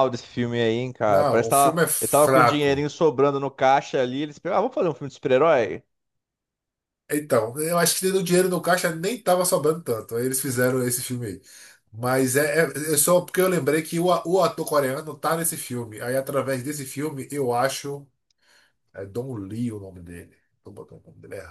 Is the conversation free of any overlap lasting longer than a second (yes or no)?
no